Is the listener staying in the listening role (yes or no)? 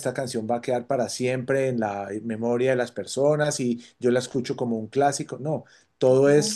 yes